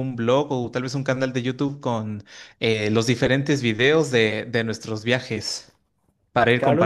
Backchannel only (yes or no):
no